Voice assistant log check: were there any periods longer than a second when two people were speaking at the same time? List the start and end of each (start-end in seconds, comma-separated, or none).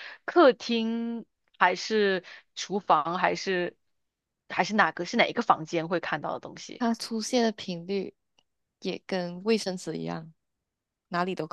none